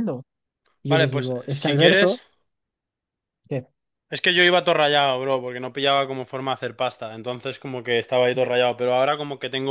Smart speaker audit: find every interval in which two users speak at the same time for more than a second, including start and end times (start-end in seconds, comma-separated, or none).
0.9-2.2